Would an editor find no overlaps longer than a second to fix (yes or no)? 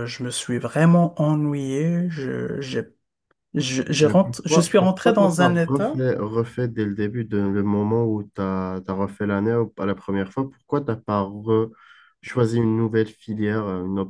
no